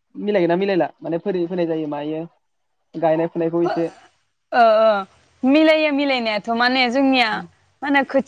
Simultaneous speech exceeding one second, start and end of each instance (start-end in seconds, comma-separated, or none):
none